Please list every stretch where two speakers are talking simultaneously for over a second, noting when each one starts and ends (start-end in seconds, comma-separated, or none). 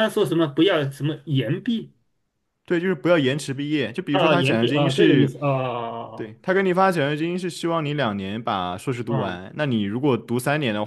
4.1-5.3